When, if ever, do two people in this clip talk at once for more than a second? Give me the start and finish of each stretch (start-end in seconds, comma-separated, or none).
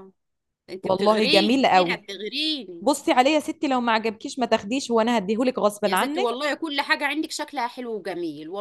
0.8-2.1